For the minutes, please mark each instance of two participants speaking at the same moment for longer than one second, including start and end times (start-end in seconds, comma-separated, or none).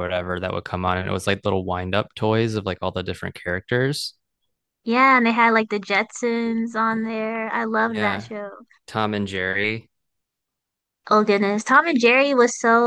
none